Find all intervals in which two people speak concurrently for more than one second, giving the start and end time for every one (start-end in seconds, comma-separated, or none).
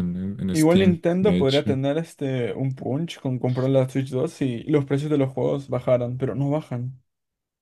0.5-1.8